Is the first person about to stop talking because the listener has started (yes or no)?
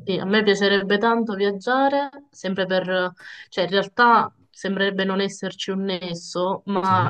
no